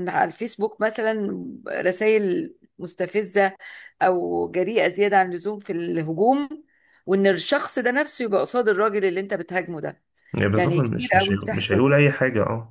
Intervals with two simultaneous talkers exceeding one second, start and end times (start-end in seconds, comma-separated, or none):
10.6-11.9